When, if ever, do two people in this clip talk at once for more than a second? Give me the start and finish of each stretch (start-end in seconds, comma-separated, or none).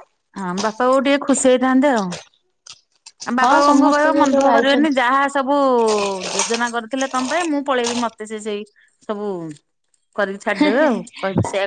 3.4-5.0